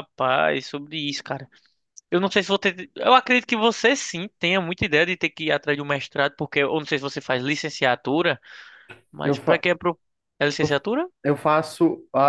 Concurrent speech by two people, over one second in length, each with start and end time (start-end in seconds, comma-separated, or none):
none